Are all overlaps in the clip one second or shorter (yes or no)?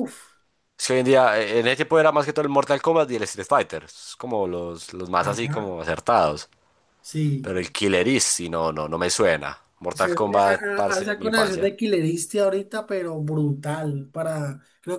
no